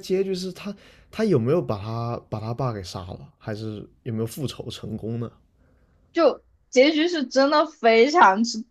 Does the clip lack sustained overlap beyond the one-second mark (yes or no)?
yes